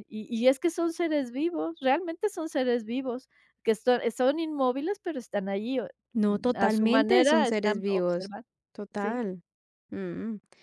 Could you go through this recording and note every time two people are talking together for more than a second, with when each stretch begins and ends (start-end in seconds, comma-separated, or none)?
6.5-8.3